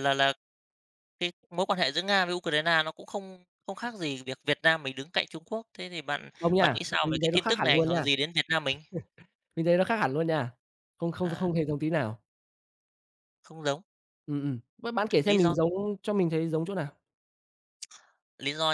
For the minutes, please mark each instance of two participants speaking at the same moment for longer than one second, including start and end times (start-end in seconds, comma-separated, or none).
6.4-8.1